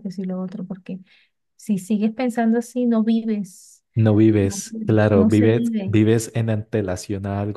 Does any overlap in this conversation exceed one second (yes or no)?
yes